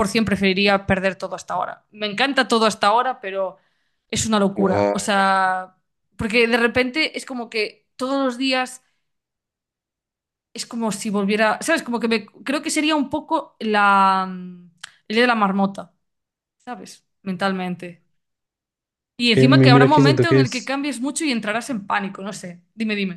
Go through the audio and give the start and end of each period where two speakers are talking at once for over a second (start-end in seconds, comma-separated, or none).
19.2-20.7